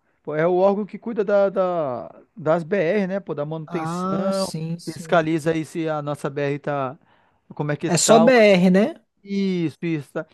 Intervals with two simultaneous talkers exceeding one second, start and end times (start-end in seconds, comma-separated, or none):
3.6-5.2